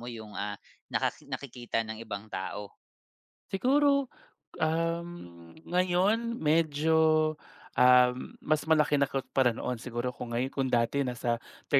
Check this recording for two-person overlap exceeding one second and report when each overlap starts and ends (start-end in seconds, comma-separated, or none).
none